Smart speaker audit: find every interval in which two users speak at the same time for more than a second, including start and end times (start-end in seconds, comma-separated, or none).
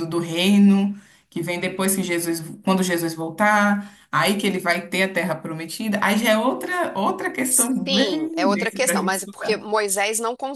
7.8-9.6